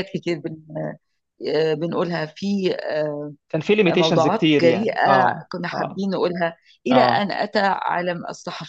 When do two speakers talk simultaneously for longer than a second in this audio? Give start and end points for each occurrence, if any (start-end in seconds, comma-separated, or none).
3.9-6.0